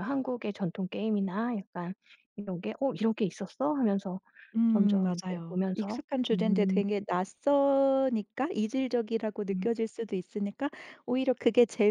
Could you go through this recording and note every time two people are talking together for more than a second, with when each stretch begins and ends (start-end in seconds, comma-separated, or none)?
4.7-6.8